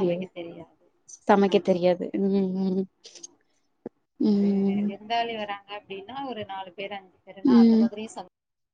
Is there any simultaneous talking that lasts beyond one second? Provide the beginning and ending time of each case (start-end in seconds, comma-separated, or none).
none